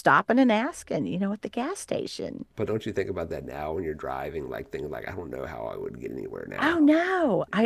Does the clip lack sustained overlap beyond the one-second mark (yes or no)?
yes